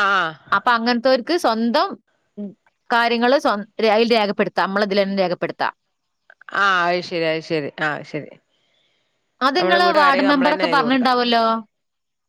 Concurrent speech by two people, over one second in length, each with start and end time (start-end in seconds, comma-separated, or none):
9.6-11.1